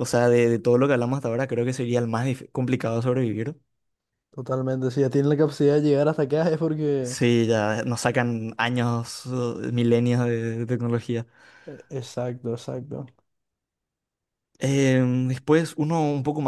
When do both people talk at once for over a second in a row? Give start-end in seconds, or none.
none